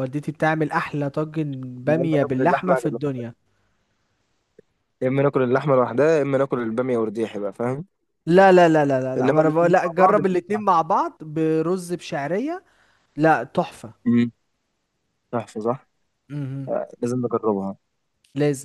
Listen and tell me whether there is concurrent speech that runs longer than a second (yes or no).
yes